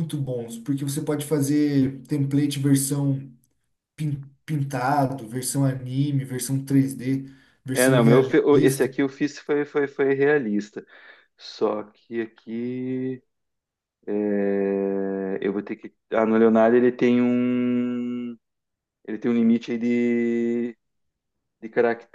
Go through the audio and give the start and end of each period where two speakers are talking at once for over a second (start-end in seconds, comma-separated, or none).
7.7-8.9